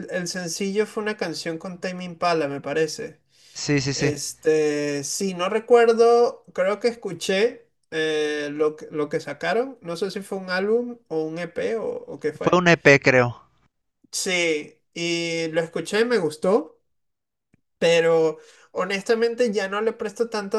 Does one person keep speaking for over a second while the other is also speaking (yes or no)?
no